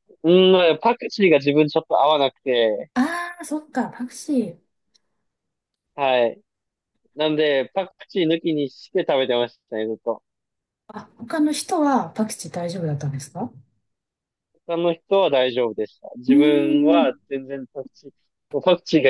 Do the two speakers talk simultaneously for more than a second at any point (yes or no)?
no